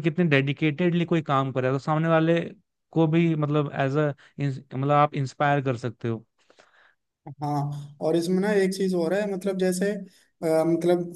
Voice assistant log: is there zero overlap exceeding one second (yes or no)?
yes